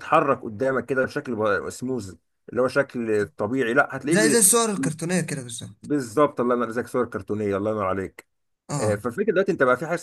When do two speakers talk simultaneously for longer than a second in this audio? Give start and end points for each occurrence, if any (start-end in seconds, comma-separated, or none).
none